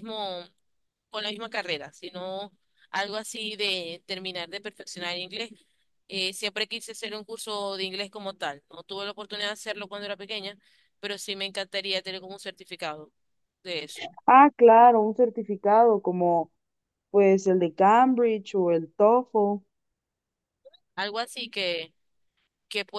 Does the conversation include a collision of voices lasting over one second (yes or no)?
no